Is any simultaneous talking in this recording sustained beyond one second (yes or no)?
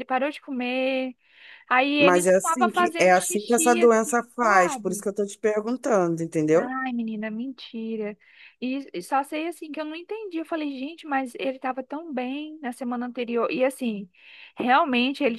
yes